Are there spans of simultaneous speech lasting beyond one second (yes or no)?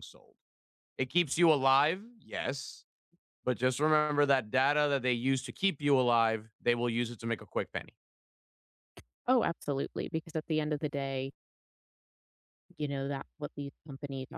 no